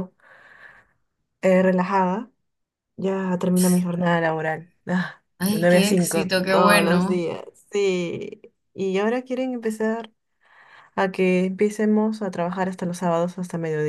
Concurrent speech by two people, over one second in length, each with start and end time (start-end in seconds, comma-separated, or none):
5.4-7.3